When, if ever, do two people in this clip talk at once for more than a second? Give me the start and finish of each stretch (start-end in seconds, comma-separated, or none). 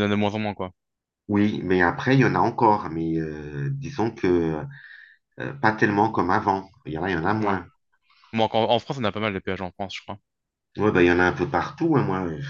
none